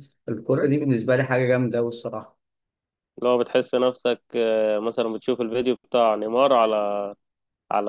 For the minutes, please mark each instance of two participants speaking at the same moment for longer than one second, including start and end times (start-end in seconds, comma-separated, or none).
none